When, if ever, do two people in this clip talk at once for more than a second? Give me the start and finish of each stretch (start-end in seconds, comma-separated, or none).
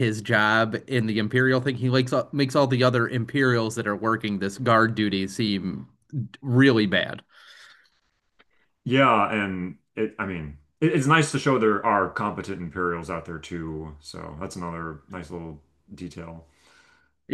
none